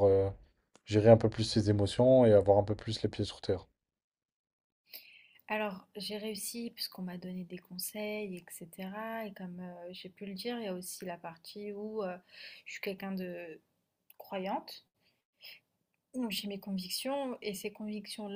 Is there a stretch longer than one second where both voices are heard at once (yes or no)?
no